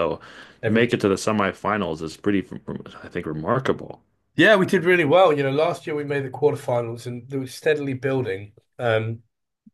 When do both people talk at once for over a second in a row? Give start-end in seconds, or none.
none